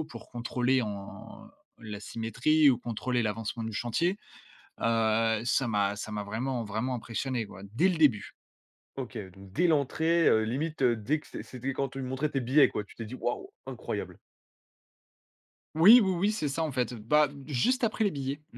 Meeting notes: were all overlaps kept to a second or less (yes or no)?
yes